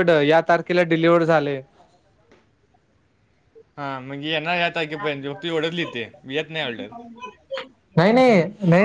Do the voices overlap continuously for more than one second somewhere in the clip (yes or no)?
no